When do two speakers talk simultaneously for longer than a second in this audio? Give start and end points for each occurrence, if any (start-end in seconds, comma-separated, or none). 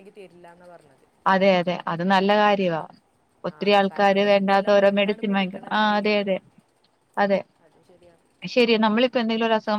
3.6-6.3